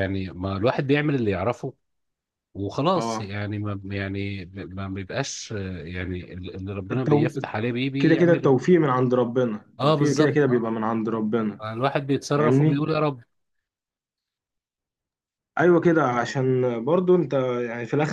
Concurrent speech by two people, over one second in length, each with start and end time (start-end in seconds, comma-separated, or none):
9.8-11.0